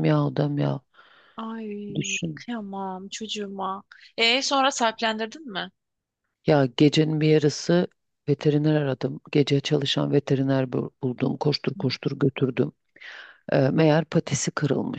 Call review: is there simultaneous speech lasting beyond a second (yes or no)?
no